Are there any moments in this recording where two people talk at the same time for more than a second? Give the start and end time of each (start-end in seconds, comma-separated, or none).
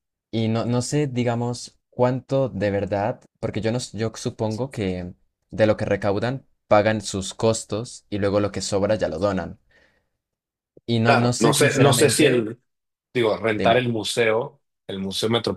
11.0-12.5